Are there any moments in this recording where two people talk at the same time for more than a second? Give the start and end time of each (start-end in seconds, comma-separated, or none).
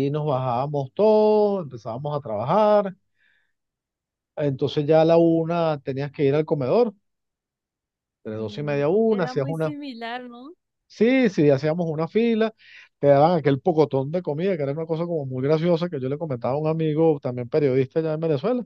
8.3-9.7